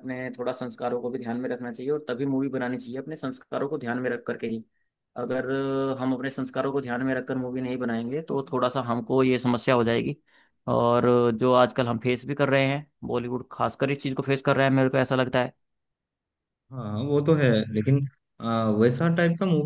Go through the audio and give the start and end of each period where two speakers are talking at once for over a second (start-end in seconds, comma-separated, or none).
none